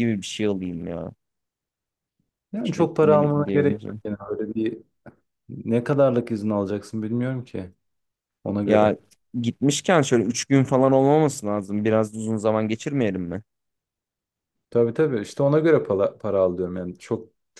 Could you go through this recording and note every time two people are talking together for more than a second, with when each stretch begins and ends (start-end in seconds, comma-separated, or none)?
2.6-4.0